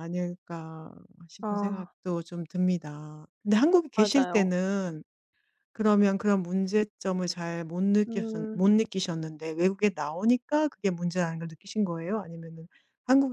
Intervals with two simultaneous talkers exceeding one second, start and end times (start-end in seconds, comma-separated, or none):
none